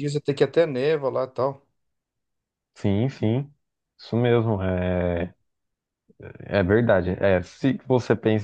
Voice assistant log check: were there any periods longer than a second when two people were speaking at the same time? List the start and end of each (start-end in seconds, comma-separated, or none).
none